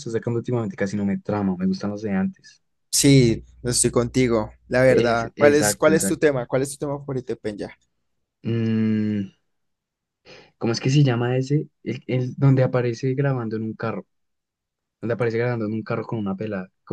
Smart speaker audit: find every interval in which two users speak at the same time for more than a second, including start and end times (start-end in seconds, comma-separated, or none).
4.9-6.3